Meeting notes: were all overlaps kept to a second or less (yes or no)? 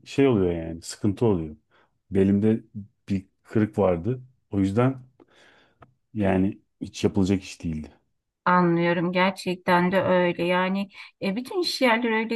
yes